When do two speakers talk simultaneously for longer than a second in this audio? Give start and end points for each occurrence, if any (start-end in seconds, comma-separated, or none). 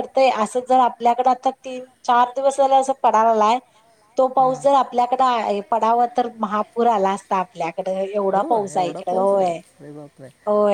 8.3-9.6